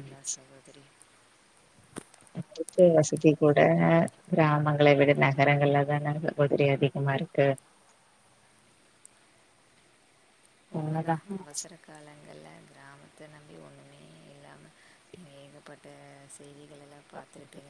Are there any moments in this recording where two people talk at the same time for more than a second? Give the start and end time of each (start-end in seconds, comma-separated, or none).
none